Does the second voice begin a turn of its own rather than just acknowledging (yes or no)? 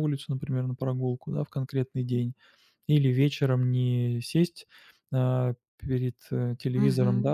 no